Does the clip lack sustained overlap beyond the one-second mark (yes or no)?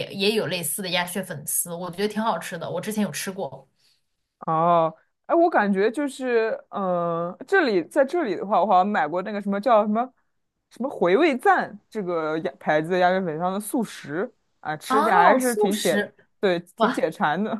no